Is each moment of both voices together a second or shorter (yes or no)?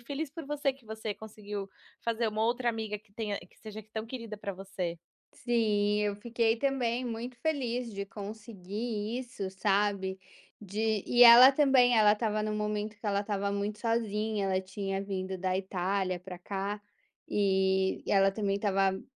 yes